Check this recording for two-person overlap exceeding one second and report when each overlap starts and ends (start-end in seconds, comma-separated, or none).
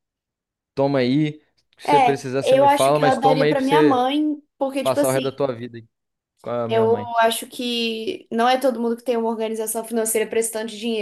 1.9-4.1